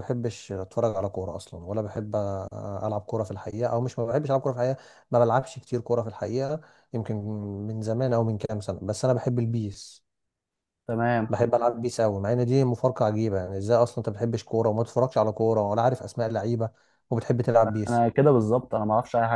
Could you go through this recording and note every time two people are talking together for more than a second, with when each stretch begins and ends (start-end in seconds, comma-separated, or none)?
none